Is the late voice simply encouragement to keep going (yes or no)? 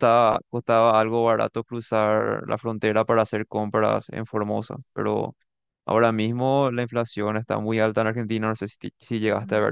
no